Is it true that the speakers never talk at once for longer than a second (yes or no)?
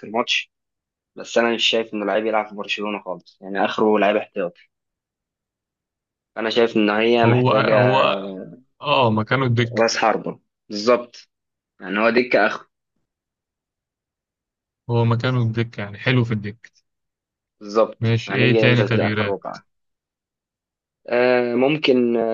no